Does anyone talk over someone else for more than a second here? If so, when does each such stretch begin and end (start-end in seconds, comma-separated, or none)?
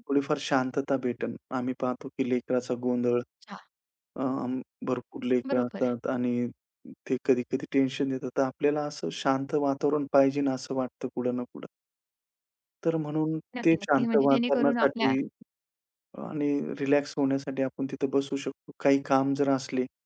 13.6-15.1